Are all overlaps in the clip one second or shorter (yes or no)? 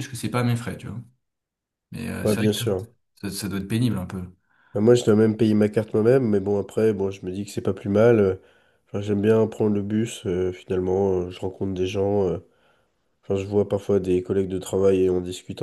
yes